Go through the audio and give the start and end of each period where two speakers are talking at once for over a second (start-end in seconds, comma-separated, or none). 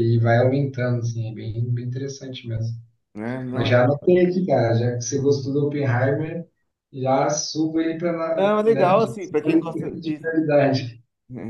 8.3-10.3